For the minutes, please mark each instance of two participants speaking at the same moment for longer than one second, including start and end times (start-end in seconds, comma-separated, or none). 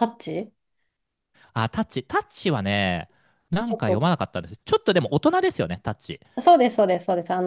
none